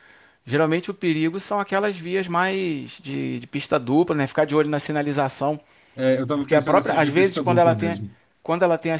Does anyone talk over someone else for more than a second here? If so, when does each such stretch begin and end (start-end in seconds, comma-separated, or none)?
6.3-8.0